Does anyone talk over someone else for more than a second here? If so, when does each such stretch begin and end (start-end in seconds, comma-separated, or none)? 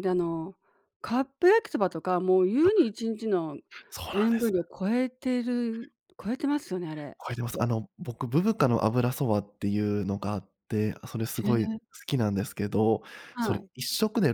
none